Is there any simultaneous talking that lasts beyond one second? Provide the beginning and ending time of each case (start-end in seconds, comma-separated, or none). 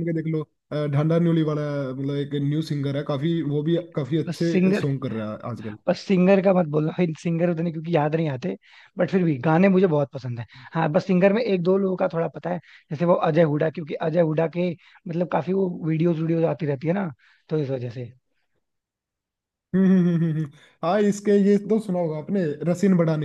none